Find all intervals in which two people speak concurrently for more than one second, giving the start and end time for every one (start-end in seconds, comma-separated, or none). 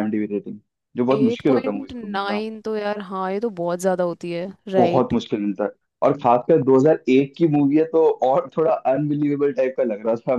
1.1-2.4